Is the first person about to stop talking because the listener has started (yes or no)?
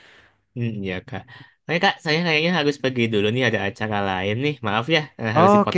yes